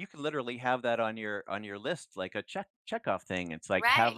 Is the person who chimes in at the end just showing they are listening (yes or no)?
no